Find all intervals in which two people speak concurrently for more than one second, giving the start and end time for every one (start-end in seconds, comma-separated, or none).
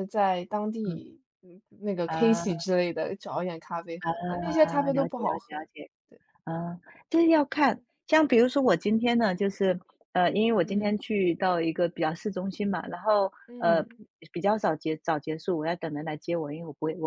4.0-5.7